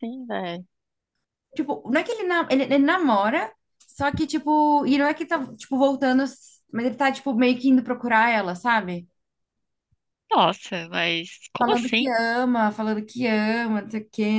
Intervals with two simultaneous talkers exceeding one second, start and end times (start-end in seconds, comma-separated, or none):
none